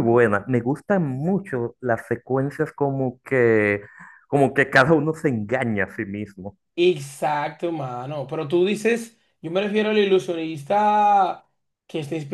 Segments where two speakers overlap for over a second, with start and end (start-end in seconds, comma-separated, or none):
none